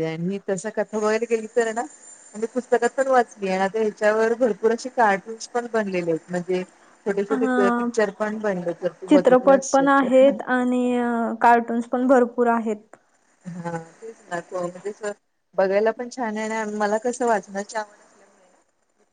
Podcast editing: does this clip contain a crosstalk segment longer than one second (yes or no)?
yes